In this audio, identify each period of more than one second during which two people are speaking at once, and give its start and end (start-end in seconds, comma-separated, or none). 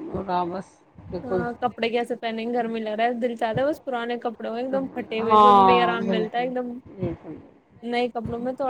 5.2-6.5